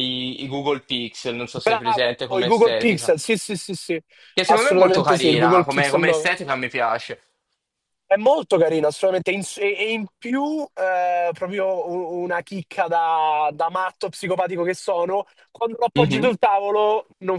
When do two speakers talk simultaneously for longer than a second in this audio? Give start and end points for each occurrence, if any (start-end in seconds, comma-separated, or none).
1.6-3.1, 4.5-6.3